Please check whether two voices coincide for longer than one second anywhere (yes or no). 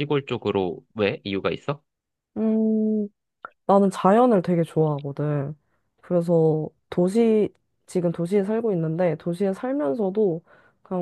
no